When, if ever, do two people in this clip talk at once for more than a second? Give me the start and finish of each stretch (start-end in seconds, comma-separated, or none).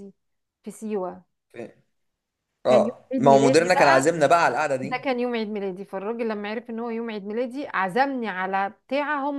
2.7-4.0